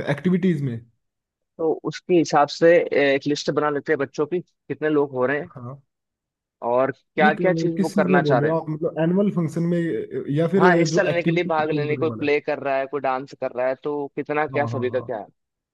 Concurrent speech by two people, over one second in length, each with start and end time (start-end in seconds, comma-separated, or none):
7.2-8.6, 10.6-12.3